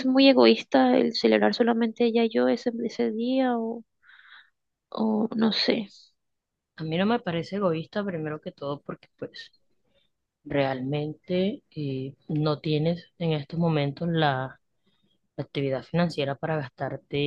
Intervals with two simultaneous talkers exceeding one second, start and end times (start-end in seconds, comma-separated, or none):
none